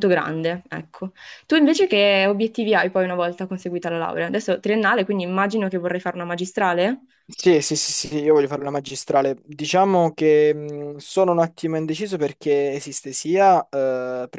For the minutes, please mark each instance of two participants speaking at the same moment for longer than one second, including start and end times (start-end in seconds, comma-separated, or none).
none